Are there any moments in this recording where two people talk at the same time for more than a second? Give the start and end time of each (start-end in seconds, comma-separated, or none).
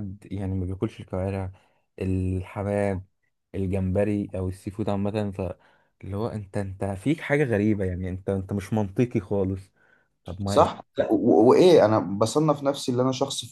none